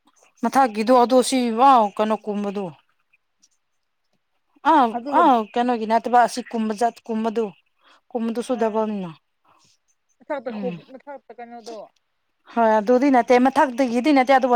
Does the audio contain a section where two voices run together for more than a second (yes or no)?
no